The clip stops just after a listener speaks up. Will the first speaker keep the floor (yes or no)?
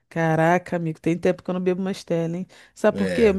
yes